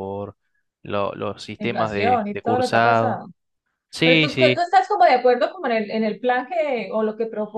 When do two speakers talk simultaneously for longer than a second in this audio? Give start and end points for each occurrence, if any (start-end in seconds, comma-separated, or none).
1.6-3.3